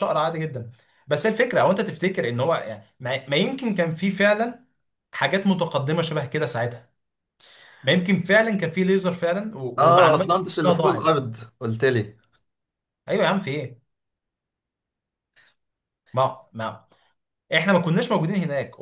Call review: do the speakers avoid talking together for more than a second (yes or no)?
no